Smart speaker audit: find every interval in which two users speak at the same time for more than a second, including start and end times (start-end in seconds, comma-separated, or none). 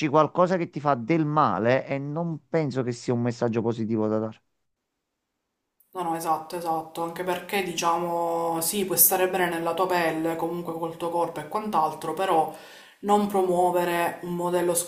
none